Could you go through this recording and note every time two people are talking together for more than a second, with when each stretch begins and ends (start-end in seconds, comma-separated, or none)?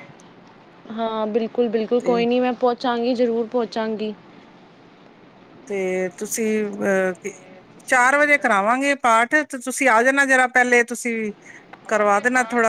none